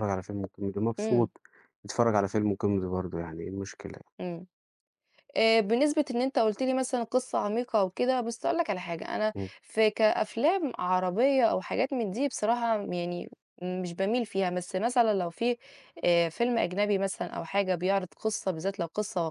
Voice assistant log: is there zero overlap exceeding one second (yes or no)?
yes